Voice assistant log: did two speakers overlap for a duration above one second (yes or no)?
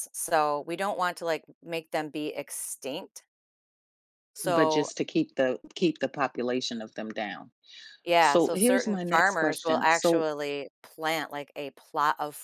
yes